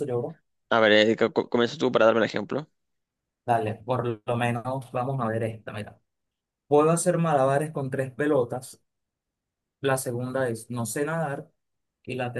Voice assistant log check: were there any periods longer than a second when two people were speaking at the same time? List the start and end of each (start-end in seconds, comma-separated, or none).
none